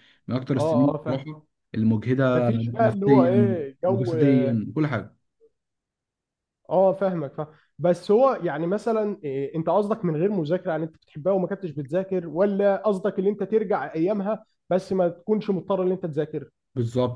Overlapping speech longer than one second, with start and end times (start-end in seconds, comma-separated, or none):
2.3-4.1